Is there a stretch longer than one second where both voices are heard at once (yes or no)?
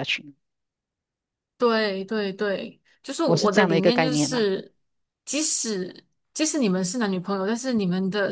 yes